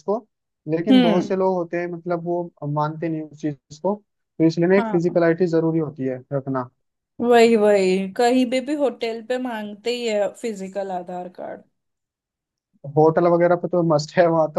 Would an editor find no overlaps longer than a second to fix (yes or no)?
yes